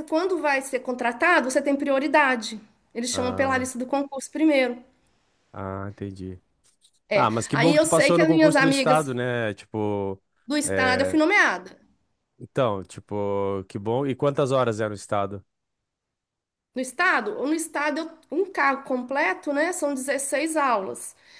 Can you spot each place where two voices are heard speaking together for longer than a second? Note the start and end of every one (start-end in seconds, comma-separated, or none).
7.1-9.0